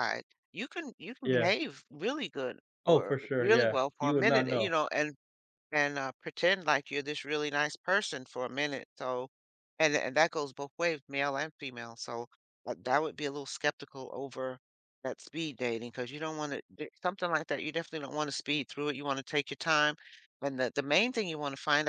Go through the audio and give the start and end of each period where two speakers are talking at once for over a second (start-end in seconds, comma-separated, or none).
2.9-4.7